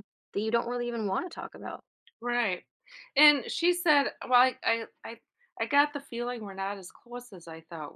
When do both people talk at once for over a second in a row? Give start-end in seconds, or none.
none